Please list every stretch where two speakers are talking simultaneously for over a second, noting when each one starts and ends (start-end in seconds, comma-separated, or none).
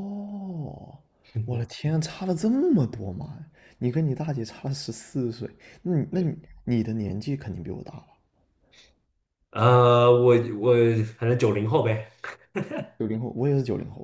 none